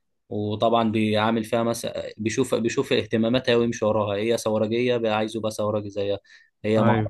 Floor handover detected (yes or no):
no